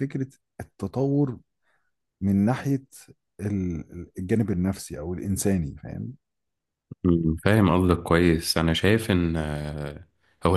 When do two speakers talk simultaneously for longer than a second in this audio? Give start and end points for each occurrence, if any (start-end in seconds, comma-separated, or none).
none